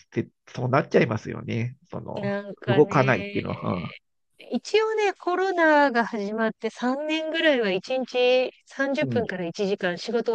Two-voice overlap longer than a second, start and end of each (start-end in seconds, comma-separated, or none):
2.1-3.5